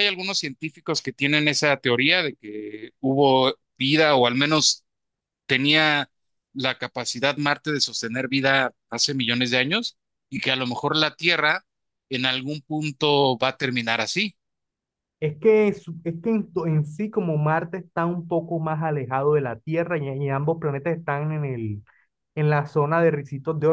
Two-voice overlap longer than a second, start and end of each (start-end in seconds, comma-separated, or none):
none